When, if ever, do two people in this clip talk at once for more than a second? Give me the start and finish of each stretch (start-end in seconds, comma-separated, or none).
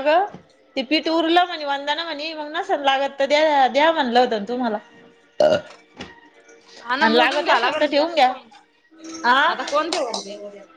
7.0-8.3